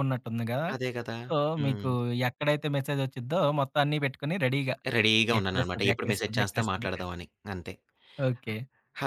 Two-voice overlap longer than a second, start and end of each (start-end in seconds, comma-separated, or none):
5.4-6.9